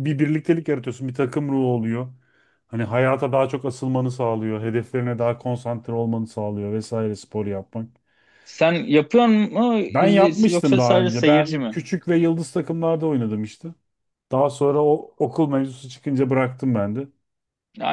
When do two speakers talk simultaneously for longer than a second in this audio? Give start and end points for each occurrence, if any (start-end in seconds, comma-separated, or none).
9.9-11.8